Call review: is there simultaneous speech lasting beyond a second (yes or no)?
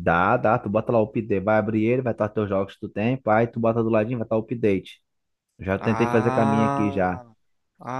yes